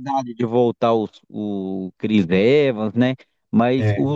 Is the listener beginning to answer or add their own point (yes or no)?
no